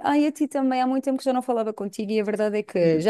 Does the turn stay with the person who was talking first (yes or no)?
yes